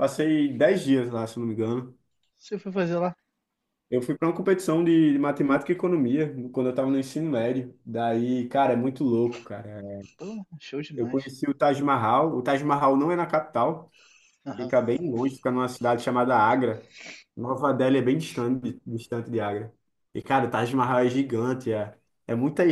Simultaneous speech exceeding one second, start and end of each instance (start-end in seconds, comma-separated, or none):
none